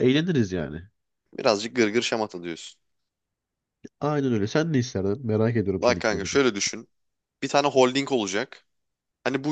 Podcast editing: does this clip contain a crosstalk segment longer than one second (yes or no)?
no